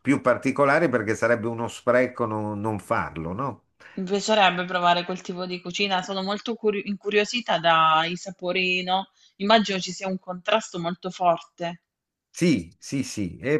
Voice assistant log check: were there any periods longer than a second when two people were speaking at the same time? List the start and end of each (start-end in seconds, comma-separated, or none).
none